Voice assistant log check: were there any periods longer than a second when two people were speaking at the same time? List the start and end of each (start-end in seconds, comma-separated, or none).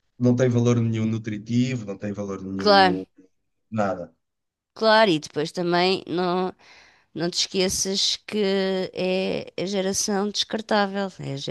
none